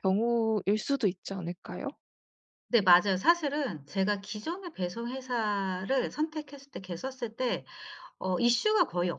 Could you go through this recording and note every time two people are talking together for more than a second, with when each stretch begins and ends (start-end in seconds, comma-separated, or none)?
none